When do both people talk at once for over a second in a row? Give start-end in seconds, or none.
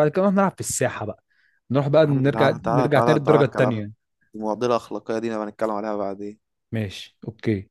2.0-3.9